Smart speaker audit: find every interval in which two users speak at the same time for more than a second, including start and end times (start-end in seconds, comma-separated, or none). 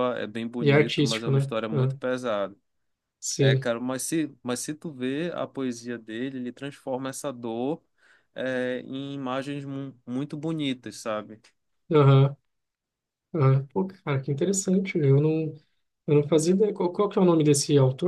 0.6-2.0